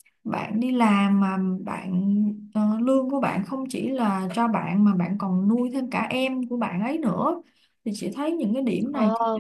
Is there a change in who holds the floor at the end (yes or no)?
no